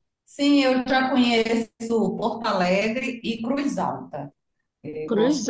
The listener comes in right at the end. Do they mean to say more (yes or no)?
yes